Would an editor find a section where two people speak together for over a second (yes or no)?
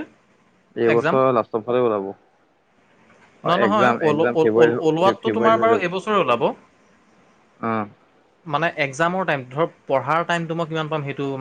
yes